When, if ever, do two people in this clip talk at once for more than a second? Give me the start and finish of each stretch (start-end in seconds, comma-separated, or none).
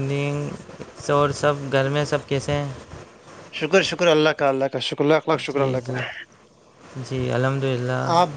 none